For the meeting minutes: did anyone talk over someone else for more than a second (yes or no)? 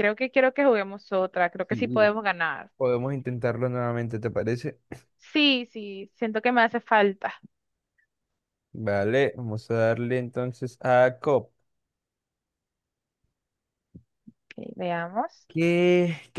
no